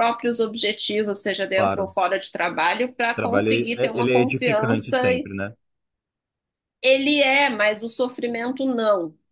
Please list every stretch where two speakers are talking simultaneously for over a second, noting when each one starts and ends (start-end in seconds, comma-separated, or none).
3.1-5.0